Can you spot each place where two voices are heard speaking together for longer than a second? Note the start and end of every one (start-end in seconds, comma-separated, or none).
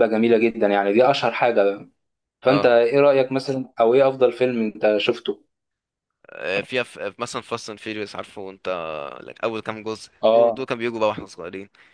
none